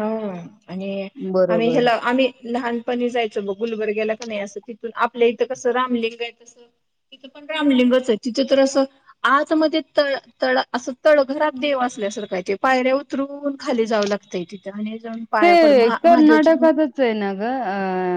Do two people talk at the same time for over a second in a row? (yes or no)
no